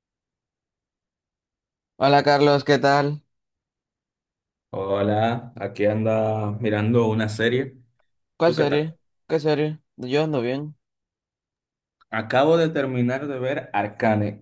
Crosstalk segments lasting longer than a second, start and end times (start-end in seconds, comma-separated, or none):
none